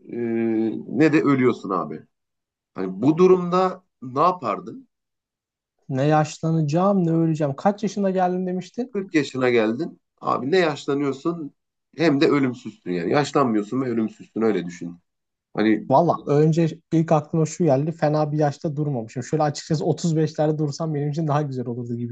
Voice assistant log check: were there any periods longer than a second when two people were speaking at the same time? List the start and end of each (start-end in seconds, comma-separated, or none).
none